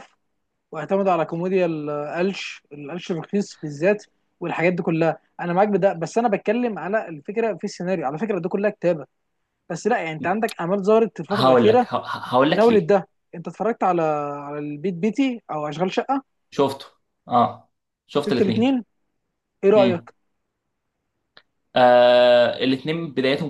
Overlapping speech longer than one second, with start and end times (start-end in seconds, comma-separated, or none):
none